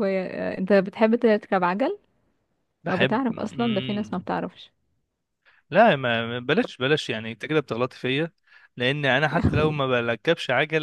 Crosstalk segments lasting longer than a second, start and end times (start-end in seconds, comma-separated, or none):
2.9-4.3